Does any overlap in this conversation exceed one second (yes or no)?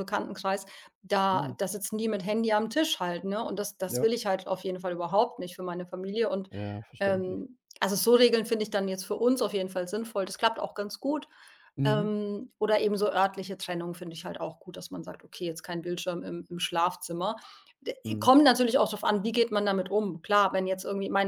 no